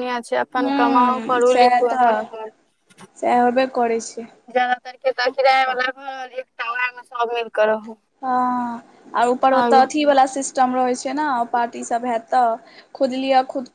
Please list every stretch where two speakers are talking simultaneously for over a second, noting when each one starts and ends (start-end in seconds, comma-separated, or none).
0.6-2.2